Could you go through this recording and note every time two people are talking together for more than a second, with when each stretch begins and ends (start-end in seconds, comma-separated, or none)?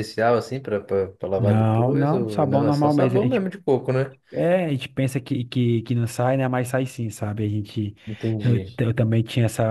1.4-3.5